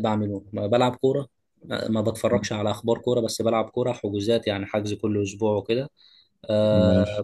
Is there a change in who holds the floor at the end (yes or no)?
no